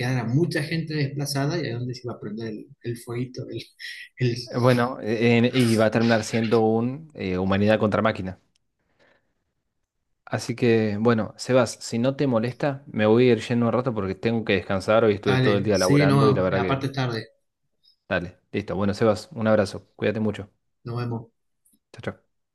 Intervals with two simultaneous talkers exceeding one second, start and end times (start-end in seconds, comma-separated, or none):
15.3-16.8